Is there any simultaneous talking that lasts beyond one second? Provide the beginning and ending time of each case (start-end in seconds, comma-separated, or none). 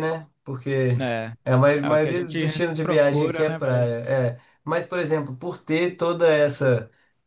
1.8-3.9